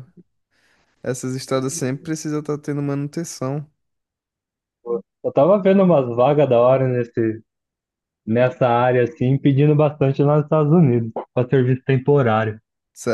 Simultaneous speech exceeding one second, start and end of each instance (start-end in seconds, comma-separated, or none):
none